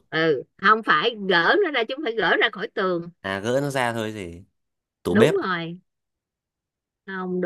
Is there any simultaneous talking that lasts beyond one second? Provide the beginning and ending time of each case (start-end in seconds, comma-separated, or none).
none